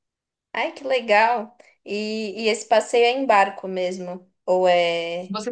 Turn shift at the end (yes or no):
yes